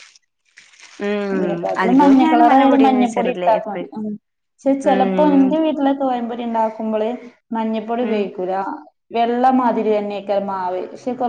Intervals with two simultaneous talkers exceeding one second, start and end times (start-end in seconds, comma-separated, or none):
1.8-3.9